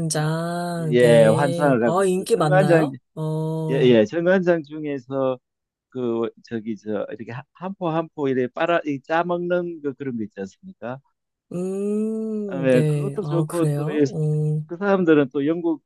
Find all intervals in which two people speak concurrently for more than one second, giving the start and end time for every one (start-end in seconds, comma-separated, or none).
0.9-2.9, 12.5-14.0